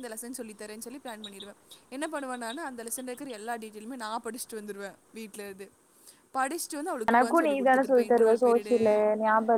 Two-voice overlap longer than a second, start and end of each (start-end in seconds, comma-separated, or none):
7.1-8.8